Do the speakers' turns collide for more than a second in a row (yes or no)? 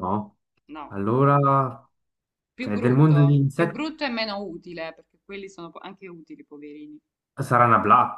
yes